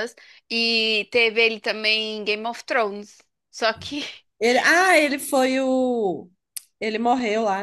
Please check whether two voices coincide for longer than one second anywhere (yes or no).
no